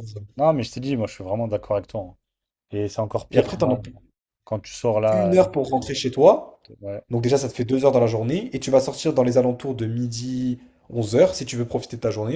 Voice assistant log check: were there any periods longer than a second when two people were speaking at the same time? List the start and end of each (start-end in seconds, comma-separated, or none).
none